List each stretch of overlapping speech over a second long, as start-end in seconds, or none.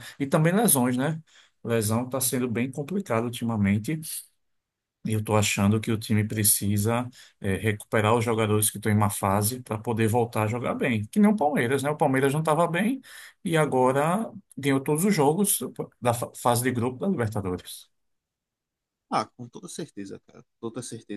none